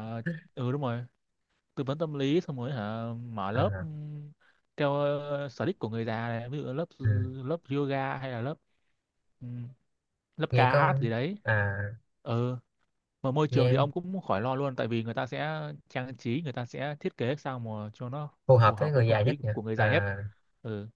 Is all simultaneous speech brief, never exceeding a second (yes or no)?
no